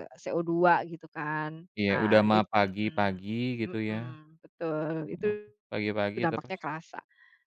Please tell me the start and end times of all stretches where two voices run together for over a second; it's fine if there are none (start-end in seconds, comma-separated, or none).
1.8-4.2